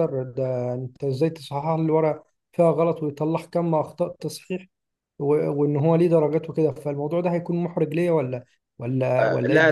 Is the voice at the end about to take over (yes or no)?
yes